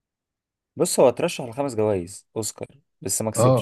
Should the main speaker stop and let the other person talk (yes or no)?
yes